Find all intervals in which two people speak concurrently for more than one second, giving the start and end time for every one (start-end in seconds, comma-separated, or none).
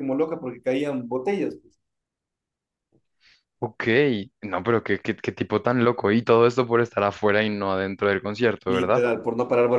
none